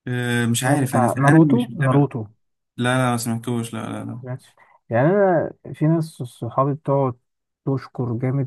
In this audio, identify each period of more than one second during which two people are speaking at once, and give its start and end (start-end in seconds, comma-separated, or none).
0.6-2.1